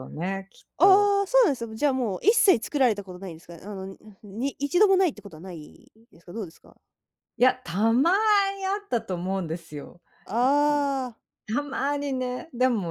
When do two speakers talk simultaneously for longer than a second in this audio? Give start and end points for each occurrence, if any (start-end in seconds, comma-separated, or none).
none